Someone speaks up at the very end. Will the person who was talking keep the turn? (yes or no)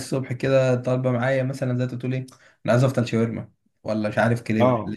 yes